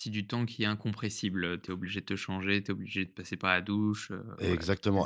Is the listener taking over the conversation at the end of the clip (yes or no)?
yes